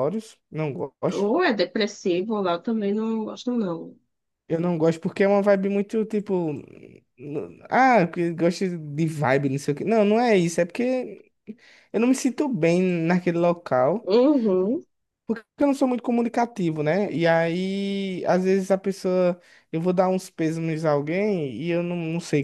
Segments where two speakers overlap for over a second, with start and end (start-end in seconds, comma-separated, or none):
none